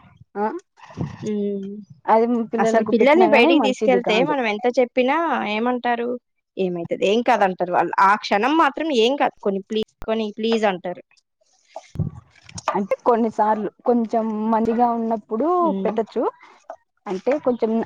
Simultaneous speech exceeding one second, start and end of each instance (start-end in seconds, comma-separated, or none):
2.6-4.3